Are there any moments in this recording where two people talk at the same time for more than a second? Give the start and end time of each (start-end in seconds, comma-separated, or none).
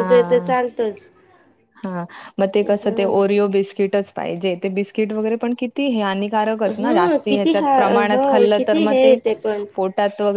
6.8-9.1